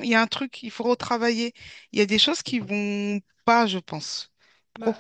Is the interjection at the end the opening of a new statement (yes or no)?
yes